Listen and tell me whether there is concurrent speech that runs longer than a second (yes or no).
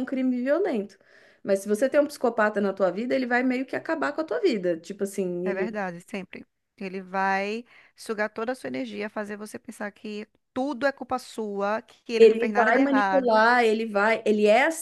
yes